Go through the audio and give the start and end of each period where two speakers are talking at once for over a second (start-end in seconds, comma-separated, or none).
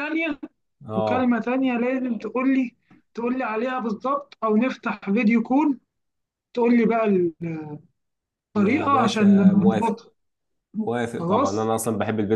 8.6-9.9